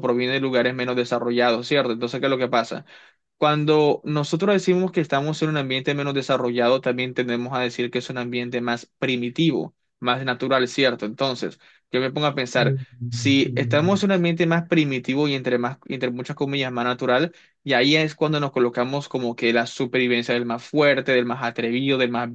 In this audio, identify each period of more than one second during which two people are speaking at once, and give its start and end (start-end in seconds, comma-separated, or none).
12.6-14.1